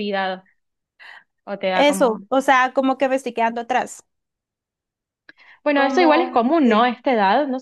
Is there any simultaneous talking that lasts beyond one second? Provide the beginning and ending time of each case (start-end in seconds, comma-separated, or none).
5.7-6.9